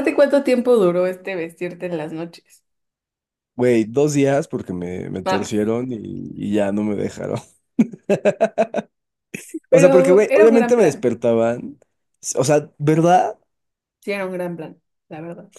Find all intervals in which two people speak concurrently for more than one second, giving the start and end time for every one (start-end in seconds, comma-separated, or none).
9.7-11.1